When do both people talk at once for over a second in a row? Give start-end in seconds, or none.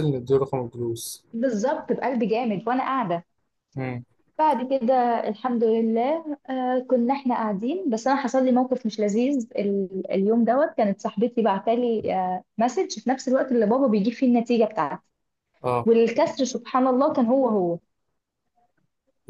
none